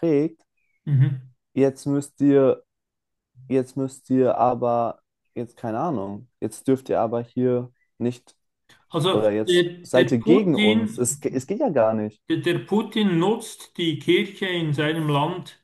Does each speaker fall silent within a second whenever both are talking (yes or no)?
no